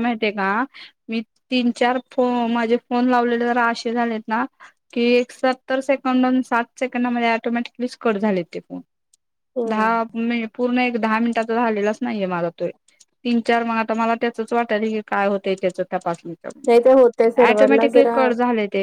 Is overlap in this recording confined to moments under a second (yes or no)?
yes